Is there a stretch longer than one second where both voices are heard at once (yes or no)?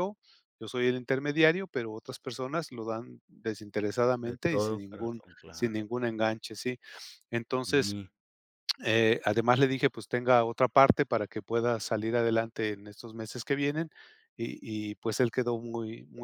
yes